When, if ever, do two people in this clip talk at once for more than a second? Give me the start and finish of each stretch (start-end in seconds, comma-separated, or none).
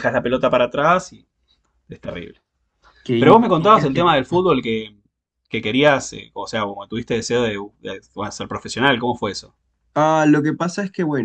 3.2-4.5